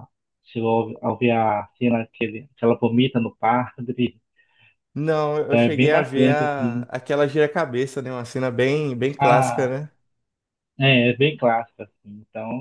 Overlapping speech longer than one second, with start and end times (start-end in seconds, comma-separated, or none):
5.5-6.9